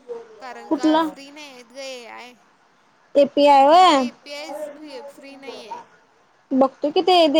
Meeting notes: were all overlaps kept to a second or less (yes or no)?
yes